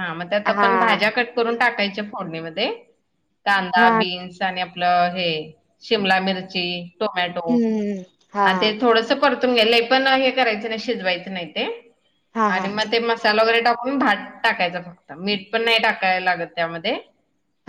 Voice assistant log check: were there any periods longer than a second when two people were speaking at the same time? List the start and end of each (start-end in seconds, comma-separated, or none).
none